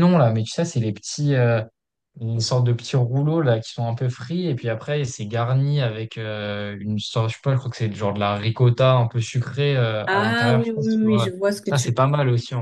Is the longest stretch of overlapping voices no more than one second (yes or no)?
no